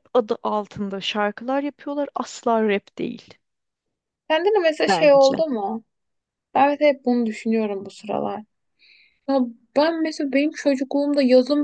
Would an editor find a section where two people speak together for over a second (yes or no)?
no